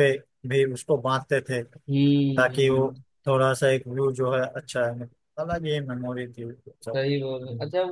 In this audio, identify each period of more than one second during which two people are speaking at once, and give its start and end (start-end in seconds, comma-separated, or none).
none